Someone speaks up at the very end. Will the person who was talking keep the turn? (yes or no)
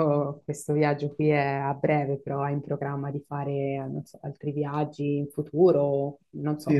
no